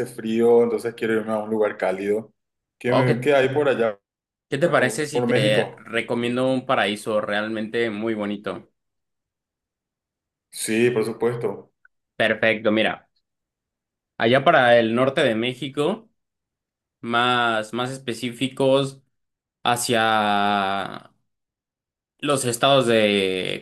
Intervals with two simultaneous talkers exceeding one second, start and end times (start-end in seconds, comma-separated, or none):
4.6-5.9